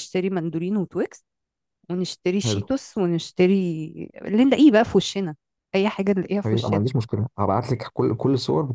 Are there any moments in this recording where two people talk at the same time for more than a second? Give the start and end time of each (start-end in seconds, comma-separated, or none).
none